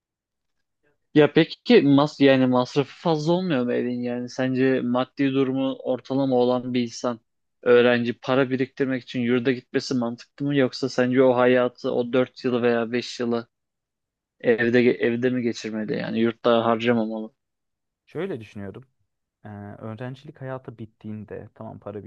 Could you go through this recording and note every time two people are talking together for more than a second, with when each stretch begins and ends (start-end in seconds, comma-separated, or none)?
none